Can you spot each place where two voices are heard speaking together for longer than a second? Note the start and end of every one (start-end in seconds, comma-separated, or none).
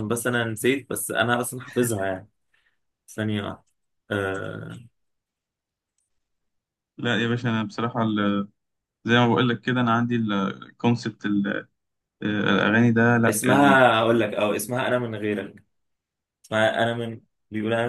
none